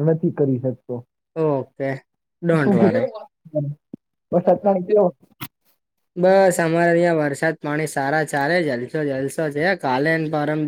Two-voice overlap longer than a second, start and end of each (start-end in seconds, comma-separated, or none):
none